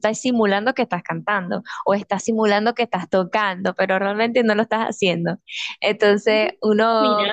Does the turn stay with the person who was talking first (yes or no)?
yes